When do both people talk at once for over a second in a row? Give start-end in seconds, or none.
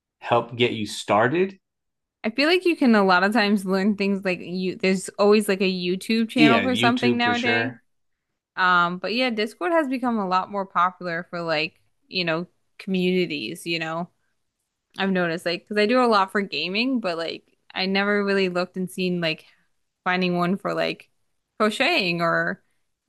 6.3-7.7